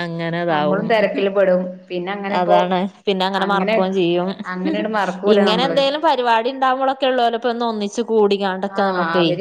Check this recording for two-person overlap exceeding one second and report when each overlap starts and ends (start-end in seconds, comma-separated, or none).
none